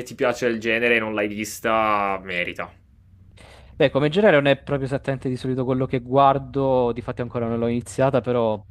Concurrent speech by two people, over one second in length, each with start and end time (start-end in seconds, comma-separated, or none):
none